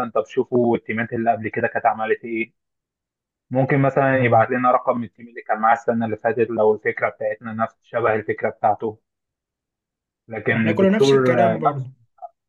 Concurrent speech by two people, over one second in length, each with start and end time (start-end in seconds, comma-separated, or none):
10.6-11.9